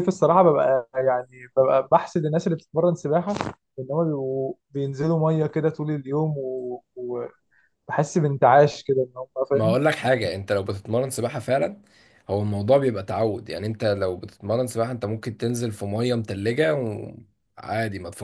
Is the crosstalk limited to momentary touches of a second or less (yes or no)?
yes